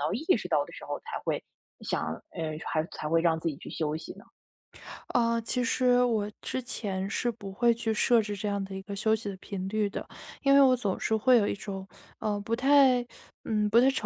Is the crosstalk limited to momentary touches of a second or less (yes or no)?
yes